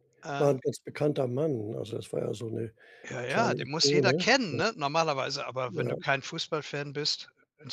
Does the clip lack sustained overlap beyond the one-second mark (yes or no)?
no